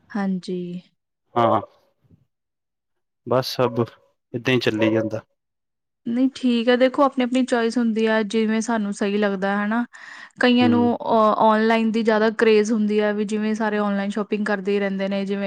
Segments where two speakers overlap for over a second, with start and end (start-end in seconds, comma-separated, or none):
none